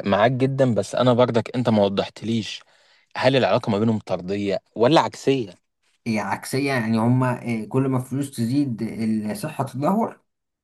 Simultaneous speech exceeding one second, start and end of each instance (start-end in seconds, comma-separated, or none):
none